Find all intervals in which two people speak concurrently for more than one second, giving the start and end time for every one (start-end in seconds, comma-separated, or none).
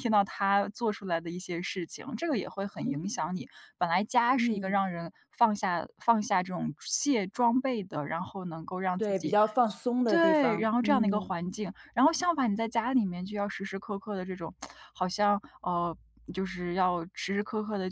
10.1-11.3